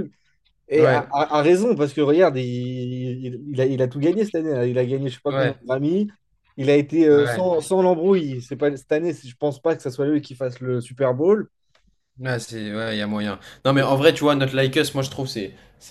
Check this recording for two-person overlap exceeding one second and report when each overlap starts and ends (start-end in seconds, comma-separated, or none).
none